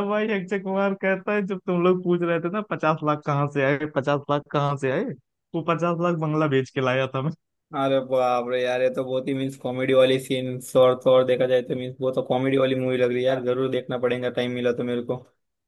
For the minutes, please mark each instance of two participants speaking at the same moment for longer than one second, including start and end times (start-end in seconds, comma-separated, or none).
none